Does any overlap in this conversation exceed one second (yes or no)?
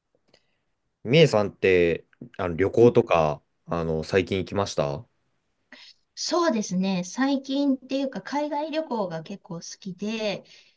no